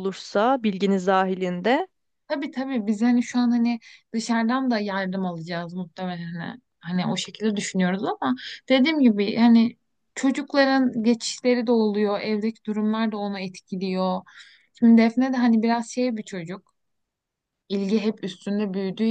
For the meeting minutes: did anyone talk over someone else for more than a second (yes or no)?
no